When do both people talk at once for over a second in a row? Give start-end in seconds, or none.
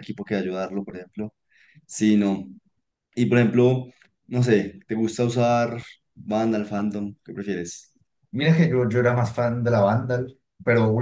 none